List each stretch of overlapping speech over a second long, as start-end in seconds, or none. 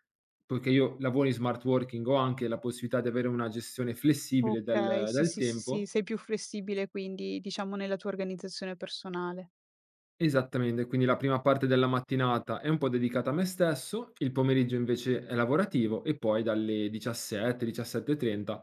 4.4-5.9